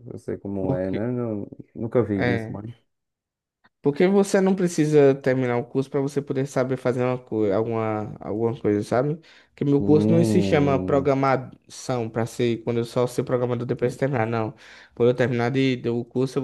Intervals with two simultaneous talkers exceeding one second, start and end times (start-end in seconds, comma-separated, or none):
9.8-11.1